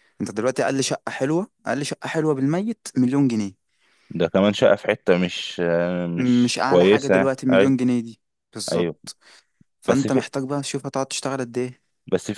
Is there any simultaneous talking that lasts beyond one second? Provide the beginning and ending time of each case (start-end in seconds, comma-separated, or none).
6.4-7.7